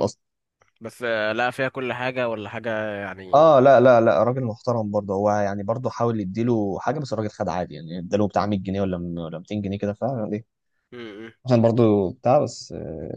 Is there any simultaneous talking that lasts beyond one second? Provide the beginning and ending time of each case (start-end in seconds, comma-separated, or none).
none